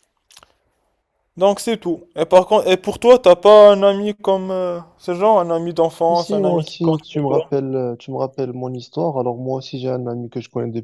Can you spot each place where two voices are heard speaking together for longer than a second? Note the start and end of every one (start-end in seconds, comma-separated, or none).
6.1-7.5